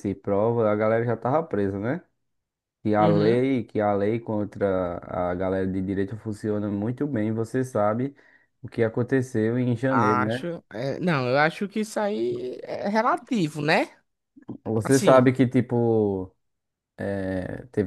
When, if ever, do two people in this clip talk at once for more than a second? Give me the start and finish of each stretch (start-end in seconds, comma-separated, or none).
none